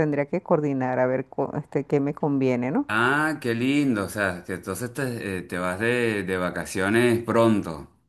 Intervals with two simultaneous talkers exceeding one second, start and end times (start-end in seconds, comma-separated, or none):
none